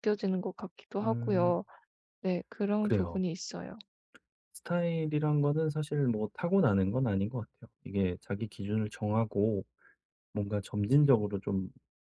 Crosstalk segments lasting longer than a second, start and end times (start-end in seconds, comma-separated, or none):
none